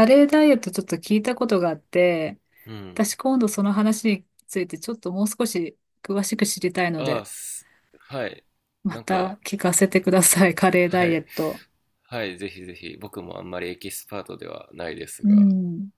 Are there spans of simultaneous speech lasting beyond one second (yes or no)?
no